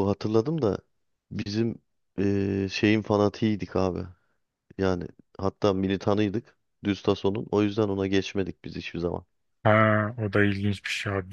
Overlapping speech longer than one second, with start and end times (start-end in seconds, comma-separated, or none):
none